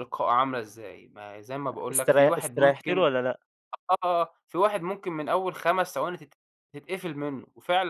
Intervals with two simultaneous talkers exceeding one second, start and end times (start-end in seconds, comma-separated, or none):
1.7-3.1